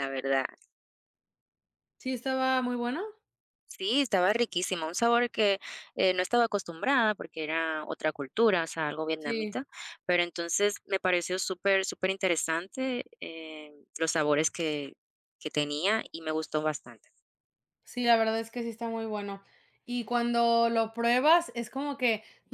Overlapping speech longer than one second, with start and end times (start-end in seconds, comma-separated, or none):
none